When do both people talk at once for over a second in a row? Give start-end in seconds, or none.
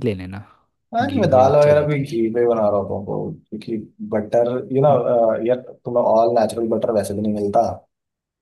1.0-2.2